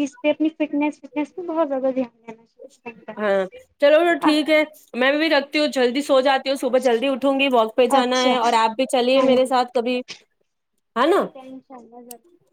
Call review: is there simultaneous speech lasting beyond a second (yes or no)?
no